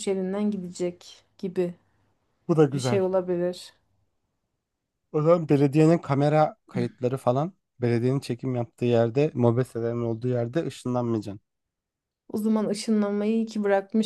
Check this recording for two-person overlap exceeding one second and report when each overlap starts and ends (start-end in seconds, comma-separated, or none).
none